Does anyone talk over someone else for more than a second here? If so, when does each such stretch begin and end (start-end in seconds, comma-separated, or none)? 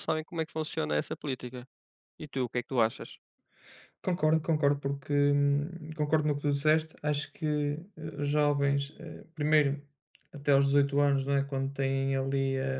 none